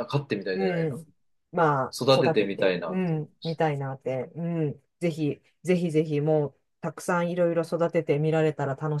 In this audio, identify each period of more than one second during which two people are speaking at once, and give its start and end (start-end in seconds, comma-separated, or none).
1.9-3.7